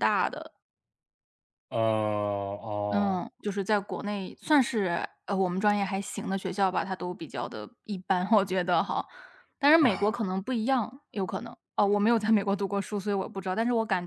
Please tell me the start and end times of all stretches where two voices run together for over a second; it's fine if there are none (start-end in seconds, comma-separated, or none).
none